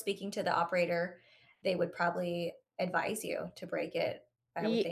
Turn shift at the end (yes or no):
yes